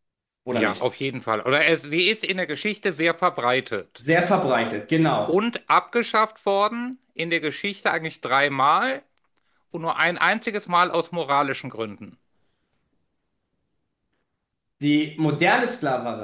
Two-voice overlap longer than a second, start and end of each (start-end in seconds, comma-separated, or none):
none